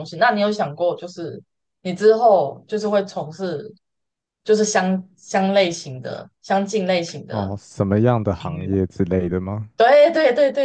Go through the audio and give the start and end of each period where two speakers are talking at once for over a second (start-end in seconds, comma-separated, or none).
none